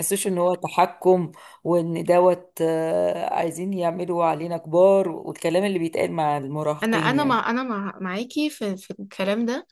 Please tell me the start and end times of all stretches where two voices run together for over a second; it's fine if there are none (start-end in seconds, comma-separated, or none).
none